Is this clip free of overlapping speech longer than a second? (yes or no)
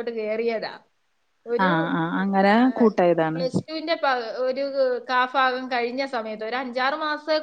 yes